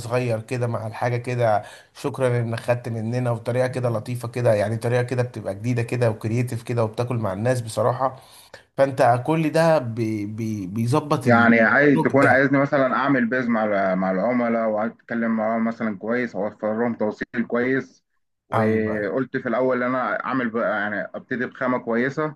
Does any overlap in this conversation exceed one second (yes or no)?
yes